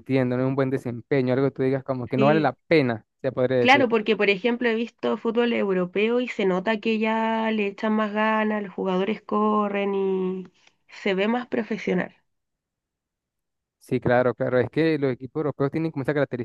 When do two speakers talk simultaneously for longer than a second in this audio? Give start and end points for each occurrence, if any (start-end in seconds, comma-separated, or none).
none